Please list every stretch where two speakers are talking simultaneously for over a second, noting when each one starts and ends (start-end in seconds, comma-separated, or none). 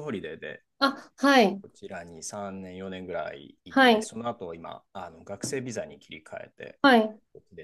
none